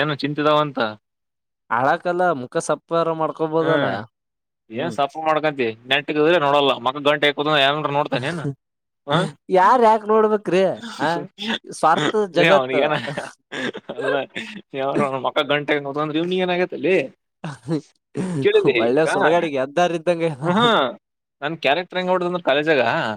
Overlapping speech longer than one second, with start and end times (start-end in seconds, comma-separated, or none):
18.8-20.5